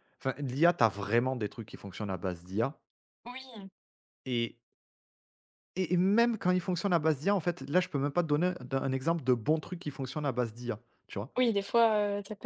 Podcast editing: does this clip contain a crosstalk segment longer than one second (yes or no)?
no